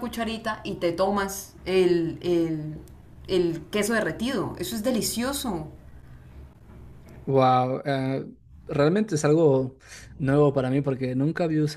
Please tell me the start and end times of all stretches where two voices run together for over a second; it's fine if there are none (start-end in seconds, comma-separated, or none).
none